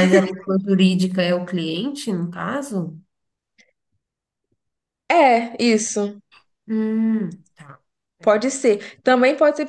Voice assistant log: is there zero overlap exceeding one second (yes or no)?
yes